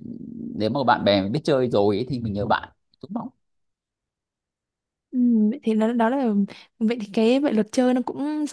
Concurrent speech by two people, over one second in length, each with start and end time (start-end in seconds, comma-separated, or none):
none